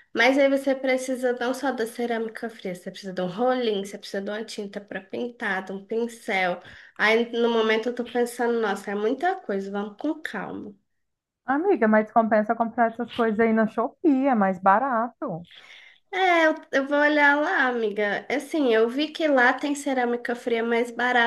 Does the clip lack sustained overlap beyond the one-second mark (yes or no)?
yes